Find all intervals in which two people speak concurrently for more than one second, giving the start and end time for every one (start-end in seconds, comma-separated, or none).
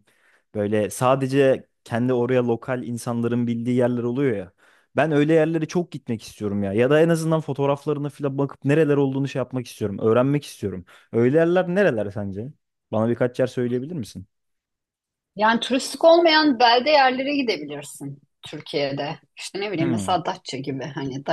none